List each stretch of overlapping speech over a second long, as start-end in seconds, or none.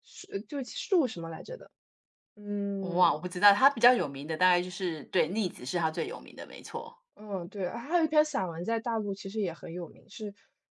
none